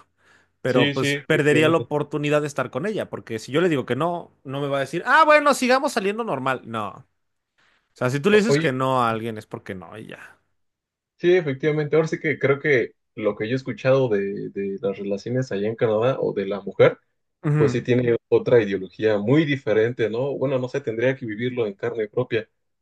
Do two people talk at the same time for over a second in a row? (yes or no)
yes